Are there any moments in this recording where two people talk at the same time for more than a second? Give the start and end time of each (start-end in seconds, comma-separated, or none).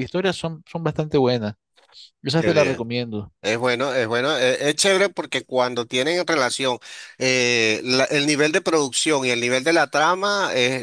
none